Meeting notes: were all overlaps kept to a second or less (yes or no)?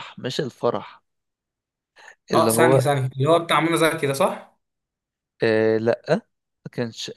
yes